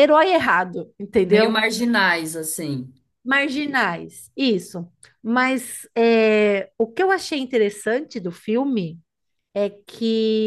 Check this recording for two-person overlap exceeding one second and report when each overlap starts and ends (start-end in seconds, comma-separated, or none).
none